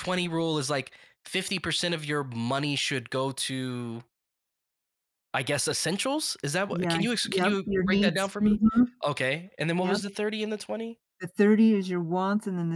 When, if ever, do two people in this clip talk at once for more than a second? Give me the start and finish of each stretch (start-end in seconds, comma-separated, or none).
6.7-8.6